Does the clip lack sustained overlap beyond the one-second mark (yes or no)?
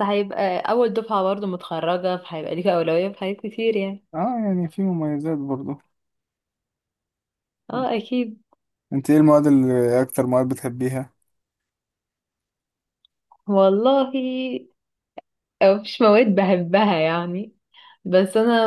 yes